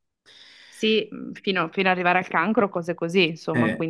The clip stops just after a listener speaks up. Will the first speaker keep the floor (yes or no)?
no